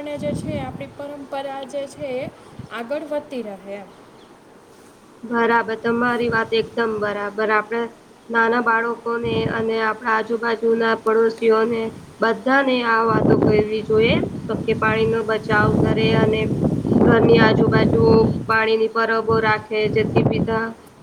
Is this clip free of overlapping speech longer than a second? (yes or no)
yes